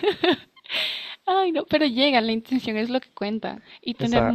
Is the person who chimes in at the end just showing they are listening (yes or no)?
yes